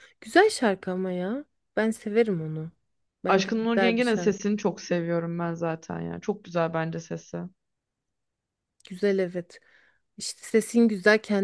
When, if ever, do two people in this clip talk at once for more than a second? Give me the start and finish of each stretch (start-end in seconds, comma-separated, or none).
3.3-4.5